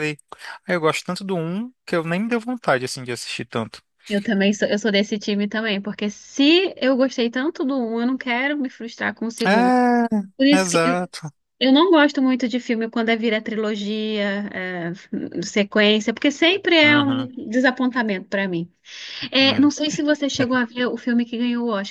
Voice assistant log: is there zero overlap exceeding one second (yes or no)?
yes